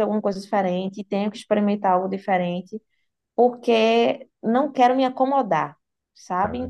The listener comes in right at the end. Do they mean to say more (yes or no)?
no